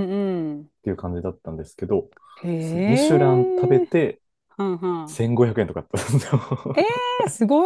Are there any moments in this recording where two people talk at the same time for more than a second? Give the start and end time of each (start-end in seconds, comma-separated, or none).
2.6-3.8